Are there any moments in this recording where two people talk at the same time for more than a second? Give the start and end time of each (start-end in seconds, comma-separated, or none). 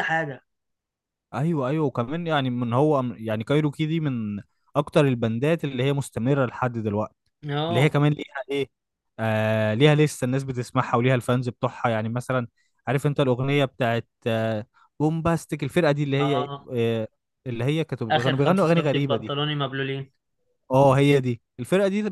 18.1-19.4